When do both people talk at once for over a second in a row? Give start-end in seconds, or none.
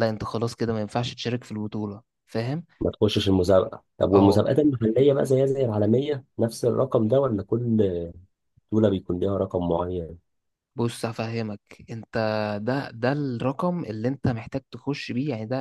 none